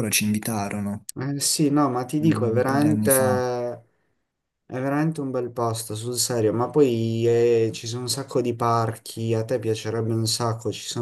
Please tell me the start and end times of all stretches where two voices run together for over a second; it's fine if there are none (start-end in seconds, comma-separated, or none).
2.2-3.4